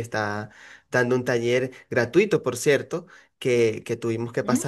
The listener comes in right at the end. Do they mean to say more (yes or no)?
no